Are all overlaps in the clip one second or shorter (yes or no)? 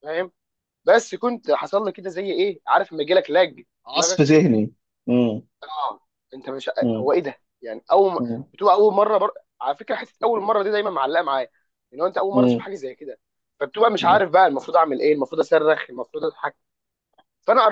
yes